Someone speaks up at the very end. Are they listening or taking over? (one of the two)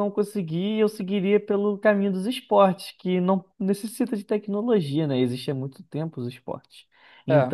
listening